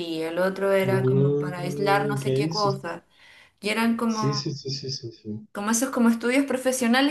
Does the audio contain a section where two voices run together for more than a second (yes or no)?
yes